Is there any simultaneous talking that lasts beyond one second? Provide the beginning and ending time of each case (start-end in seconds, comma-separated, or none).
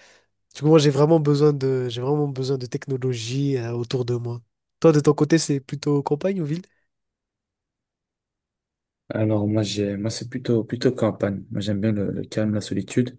none